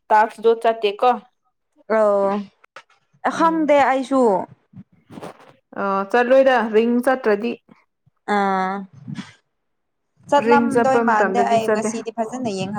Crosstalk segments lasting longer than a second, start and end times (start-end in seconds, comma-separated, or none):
10.4-11.9